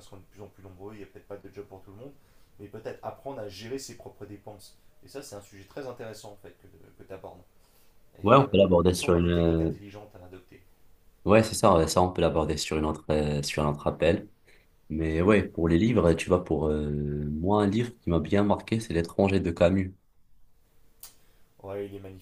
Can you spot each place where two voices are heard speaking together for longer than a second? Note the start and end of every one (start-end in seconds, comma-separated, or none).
8.2-9.7